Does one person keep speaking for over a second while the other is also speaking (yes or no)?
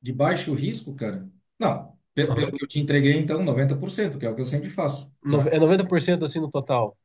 no